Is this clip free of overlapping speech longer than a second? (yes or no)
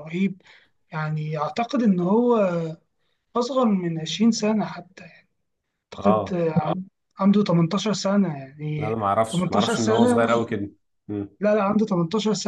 no